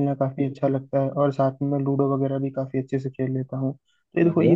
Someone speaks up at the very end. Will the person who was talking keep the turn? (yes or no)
yes